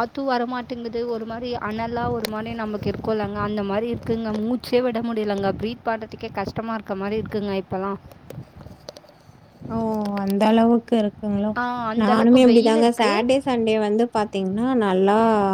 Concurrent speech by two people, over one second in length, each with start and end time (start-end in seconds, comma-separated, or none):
12.0-13.4